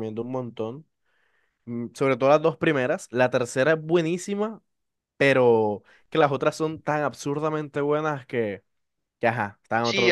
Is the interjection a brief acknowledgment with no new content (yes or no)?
no